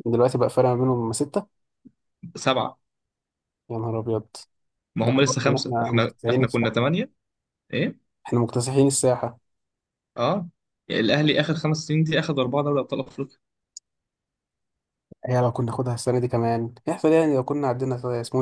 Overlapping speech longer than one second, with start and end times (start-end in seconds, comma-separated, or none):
5.0-6.8